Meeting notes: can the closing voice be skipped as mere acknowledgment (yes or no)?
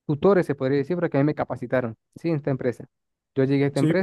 yes